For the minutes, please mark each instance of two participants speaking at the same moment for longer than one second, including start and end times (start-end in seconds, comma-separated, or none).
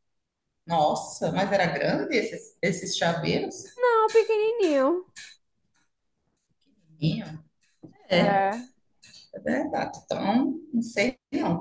none